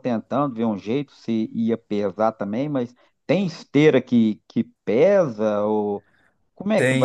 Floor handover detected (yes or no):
yes